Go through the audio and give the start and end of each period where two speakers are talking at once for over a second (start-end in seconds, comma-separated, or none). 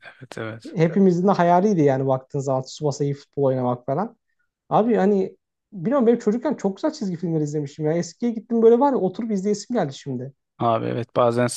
none